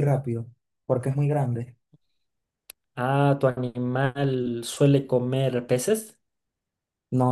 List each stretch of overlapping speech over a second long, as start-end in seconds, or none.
none